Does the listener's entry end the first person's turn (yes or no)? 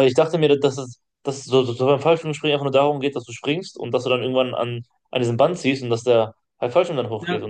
yes